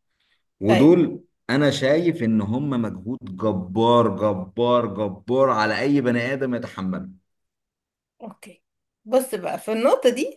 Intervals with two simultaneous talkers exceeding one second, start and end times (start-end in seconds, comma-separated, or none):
none